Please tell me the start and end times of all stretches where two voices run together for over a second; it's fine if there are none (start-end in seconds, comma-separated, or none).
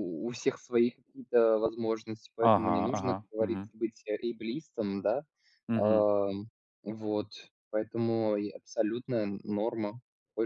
2.4-3.7